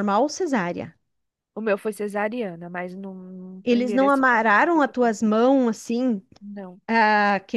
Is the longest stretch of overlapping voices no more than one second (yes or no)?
no